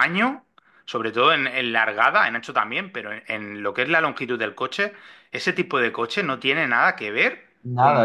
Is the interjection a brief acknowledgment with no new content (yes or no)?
no